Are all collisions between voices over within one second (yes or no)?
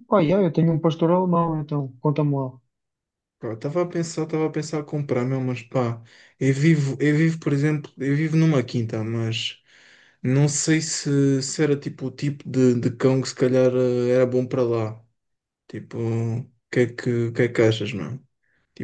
yes